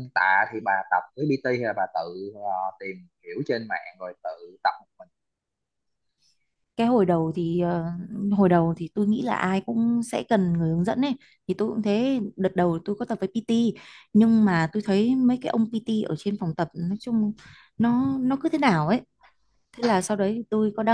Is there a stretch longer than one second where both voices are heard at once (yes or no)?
no